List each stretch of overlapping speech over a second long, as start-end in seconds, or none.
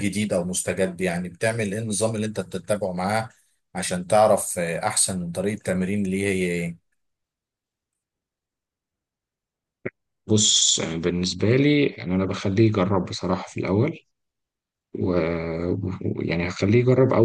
none